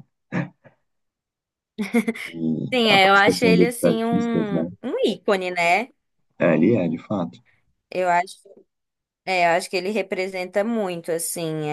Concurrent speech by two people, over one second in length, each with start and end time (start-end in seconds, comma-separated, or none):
2.7-4.7